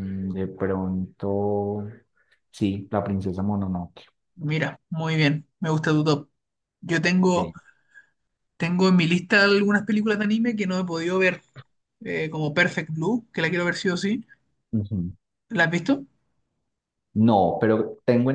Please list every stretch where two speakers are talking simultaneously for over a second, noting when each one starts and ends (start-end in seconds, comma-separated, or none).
none